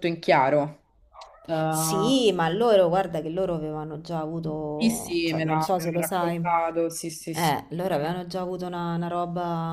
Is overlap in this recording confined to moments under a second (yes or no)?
no